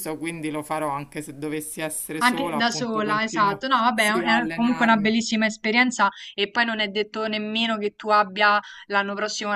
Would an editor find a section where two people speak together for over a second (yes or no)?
yes